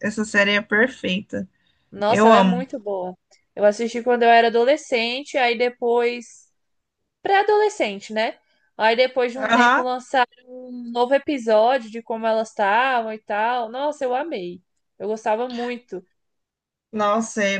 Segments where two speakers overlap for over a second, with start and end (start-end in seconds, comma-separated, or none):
none